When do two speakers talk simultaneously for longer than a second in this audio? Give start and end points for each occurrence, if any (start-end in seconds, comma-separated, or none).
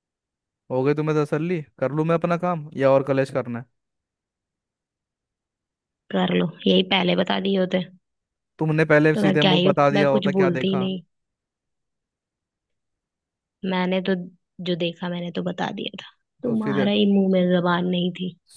9.1-10.9